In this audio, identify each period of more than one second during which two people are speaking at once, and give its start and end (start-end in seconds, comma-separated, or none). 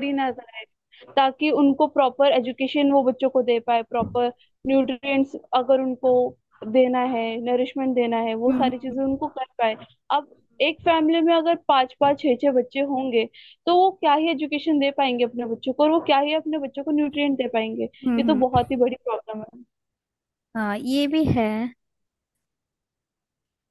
none